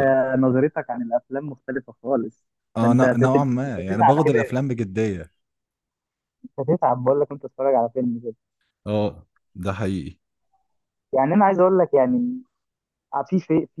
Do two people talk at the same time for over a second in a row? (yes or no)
yes